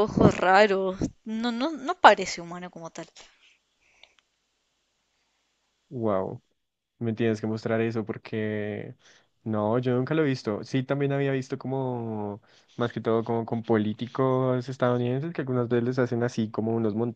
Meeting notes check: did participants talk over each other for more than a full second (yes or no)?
no